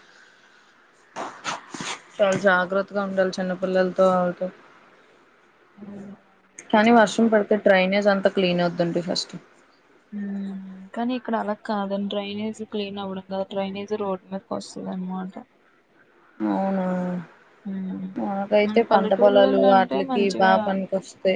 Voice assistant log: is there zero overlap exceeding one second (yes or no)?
no